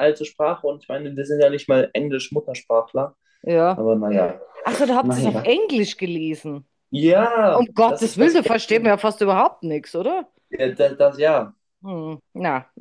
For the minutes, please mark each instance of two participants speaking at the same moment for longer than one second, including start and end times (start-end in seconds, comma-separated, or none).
7.5-8.9